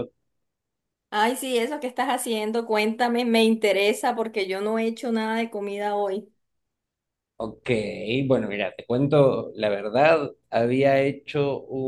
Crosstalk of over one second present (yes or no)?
no